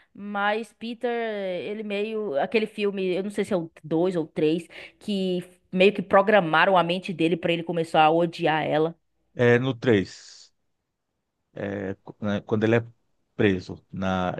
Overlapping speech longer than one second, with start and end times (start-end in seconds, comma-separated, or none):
none